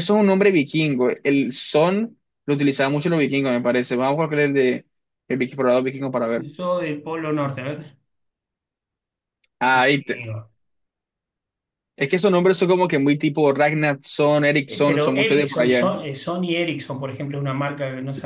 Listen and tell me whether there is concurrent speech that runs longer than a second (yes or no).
yes